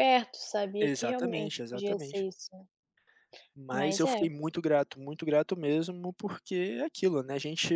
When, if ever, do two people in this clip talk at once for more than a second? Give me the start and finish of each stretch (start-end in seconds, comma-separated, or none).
0.8-2.3